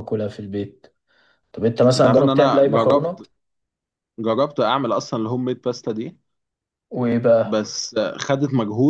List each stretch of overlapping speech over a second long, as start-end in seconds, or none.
2.0-3.2